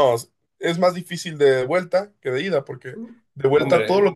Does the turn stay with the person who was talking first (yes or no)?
no